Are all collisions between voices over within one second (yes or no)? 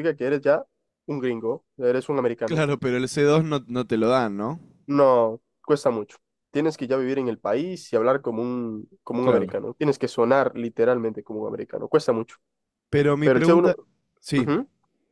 yes